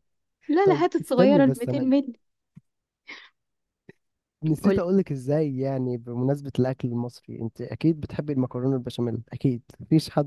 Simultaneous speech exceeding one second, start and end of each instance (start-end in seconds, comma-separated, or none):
0.6-1.9